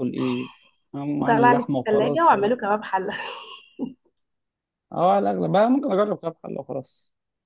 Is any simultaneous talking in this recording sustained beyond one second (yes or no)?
yes